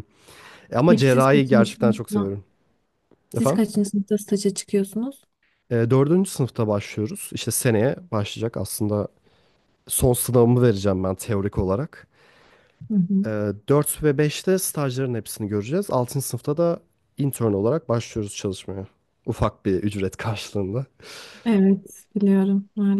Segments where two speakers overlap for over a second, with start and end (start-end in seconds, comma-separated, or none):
0.9-2.3